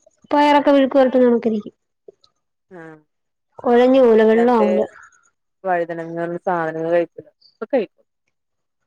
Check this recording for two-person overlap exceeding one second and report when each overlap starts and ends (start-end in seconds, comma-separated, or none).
none